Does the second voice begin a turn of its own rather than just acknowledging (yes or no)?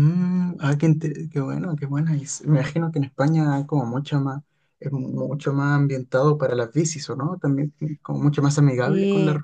no